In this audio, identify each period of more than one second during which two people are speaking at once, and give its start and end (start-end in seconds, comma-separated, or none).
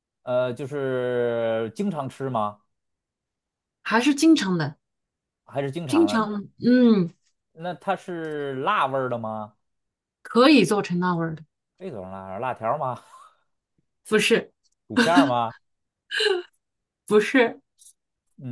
none